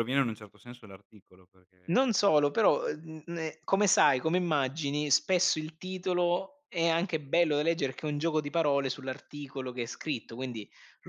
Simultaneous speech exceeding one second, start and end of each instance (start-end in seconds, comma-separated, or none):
none